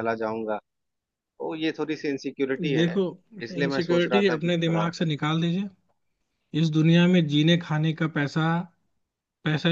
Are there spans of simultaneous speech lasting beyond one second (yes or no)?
yes